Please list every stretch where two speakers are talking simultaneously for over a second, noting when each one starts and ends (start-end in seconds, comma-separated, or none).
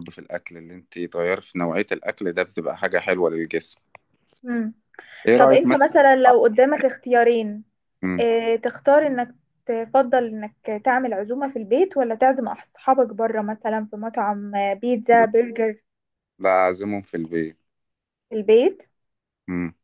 none